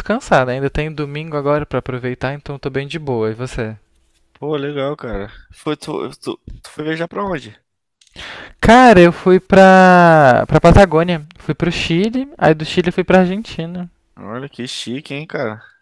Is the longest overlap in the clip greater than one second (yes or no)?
no